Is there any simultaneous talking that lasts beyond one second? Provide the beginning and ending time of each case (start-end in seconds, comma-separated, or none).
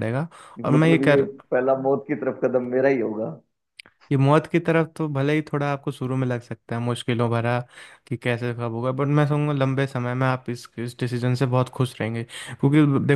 none